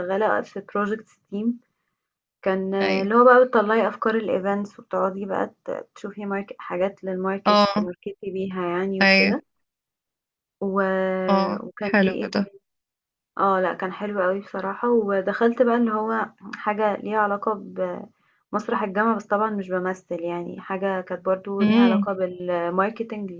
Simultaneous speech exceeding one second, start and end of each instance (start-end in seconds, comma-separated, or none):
none